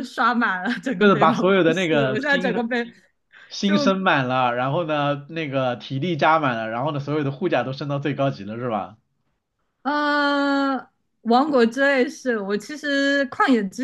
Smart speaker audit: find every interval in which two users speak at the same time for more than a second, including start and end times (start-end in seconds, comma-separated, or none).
1.0-2.6